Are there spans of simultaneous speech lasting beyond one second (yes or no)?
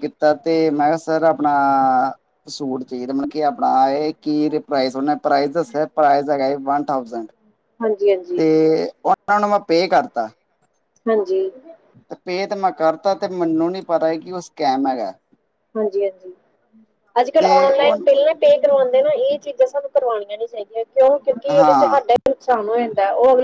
no